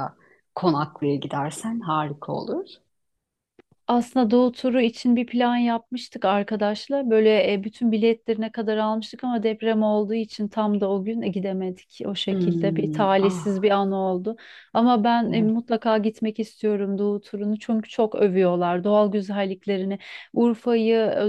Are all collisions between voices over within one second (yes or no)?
no